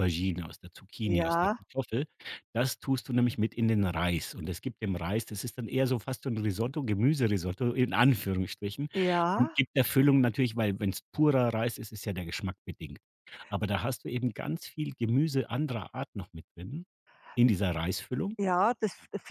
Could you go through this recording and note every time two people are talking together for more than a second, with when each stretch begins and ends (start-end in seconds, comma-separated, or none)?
none